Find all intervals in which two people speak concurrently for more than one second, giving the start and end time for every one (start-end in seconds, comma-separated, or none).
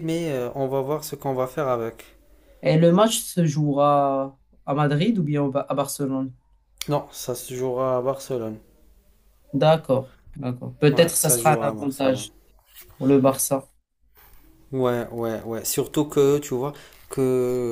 10.9-12.3